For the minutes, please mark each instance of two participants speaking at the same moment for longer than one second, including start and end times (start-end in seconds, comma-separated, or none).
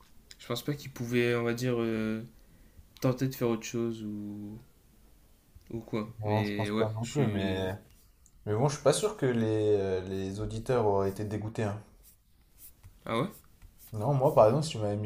6.2-7.7